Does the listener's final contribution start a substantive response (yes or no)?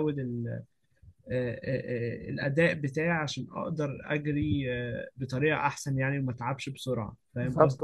yes